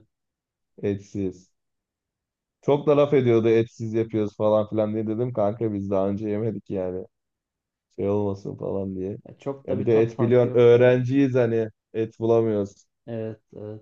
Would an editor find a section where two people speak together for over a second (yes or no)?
yes